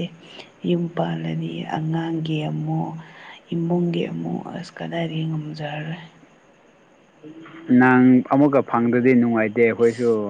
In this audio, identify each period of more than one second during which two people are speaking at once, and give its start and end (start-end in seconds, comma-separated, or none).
none